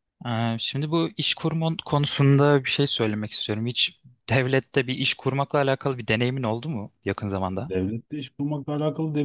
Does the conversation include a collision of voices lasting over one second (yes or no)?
no